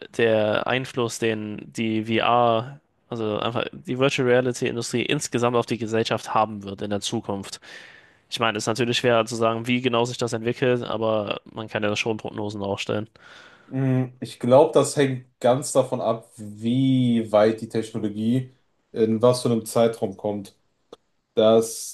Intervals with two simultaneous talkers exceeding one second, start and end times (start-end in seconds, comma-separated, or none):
none